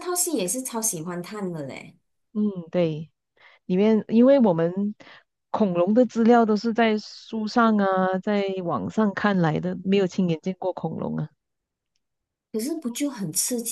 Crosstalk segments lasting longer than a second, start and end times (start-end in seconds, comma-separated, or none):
none